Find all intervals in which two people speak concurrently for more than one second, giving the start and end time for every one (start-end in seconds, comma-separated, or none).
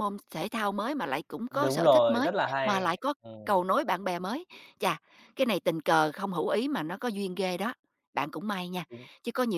1.5-3.6